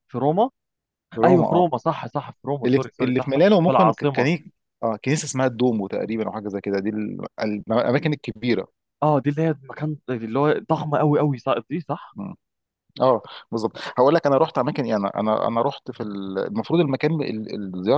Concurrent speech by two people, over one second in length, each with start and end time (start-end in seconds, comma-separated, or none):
2.6-4.3